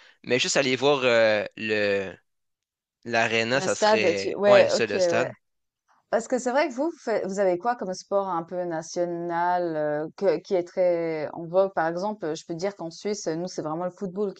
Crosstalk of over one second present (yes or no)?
yes